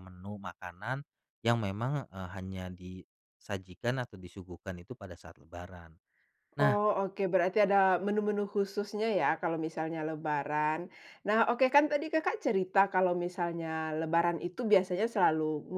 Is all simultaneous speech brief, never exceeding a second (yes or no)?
yes